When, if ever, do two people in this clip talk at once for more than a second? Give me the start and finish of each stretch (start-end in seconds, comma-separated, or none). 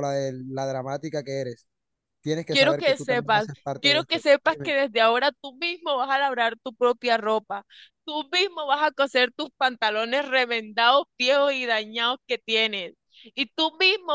2.5-4.7